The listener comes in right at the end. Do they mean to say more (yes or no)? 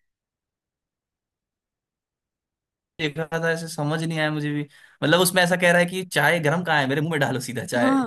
yes